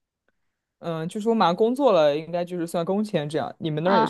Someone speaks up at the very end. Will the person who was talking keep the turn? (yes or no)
no